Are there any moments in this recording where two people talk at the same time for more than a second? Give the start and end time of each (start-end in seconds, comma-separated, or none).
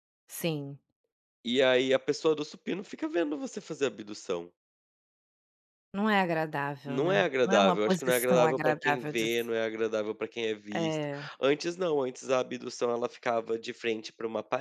6.9-9.3